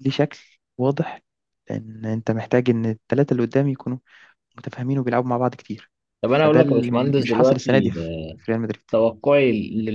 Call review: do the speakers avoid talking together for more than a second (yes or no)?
no